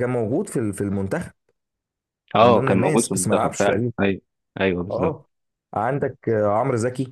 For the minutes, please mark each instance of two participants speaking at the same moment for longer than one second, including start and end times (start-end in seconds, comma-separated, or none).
2.4-3.9